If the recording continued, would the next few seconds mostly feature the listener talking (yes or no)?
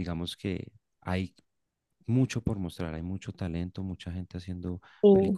no